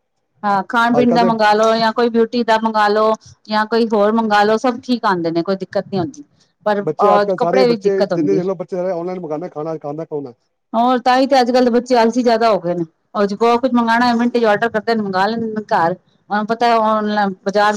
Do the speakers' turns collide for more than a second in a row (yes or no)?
yes